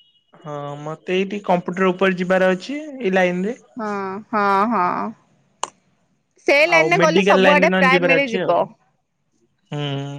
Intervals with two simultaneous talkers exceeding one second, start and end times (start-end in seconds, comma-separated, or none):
6.7-8.5